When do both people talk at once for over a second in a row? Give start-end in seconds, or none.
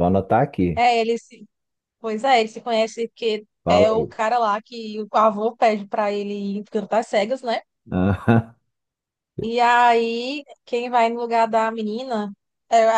none